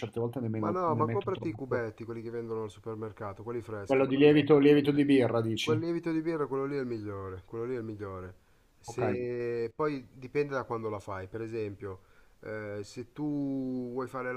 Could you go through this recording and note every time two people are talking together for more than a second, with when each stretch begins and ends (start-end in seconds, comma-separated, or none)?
0.6-1.8